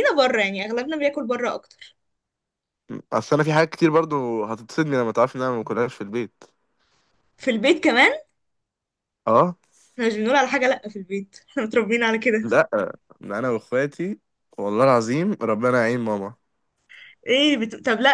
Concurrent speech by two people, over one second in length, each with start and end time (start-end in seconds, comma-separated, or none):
none